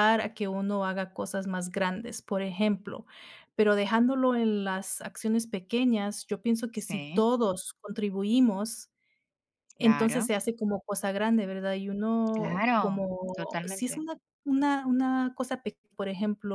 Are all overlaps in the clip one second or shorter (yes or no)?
no